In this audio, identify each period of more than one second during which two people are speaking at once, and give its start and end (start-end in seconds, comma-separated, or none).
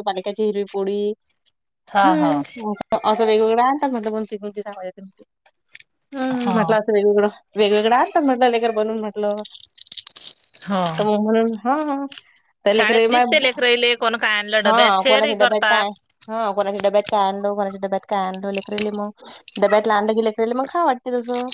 14.7-15.9